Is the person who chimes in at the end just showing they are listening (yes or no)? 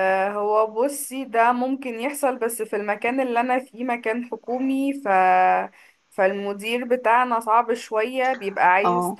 yes